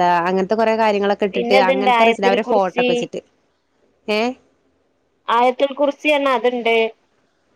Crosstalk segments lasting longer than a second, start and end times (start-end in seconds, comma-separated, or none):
1.3-2.8